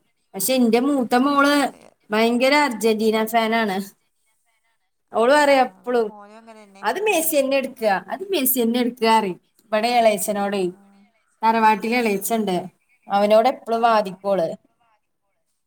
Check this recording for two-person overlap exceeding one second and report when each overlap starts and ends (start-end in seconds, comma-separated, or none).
none